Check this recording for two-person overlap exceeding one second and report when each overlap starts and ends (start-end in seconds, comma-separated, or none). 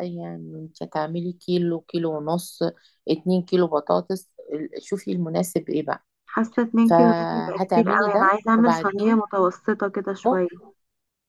6.8-9.2